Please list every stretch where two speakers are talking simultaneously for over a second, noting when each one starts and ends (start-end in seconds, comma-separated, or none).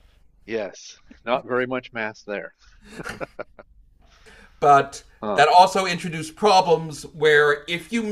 none